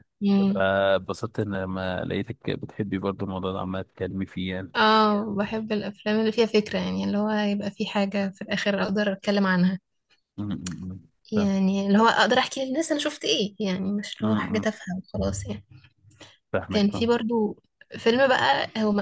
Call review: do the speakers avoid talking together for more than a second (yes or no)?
yes